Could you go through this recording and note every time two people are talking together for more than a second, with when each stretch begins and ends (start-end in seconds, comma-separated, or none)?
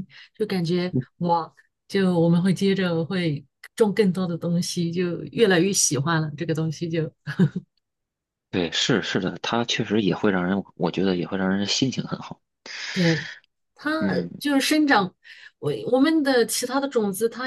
none